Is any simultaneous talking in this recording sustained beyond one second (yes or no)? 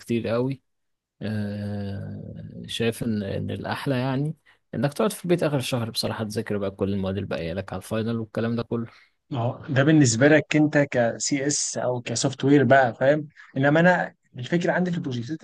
no